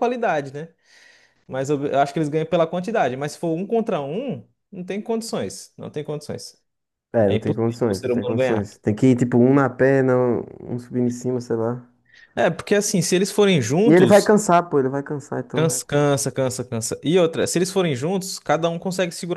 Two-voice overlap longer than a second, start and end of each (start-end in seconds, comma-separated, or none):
7.2-8.7